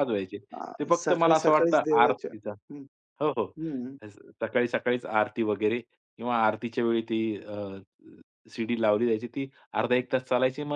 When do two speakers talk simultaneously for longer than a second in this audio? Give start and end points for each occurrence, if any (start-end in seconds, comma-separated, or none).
0.8-2.3